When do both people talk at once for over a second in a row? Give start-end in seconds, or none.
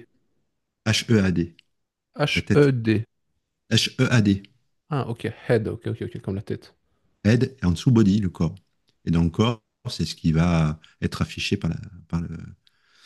none